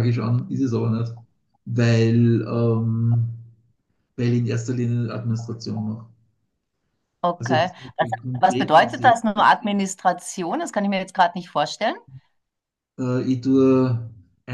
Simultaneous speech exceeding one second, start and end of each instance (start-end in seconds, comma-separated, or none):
7.4-9.2